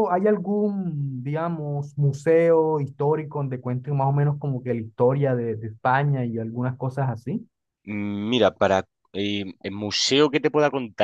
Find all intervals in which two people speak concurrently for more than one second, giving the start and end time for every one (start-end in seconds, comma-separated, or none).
none